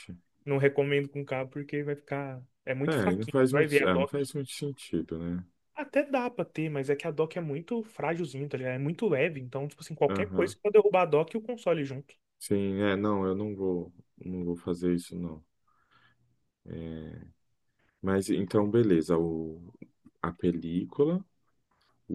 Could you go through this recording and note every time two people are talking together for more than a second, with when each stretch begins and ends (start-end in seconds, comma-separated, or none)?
2.8-4.3